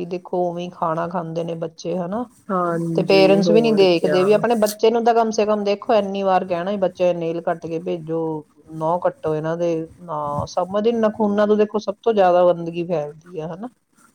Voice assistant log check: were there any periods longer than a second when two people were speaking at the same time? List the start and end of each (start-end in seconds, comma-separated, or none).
3.0-4.2